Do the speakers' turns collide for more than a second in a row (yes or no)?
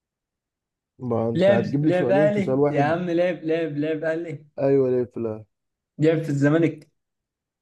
yes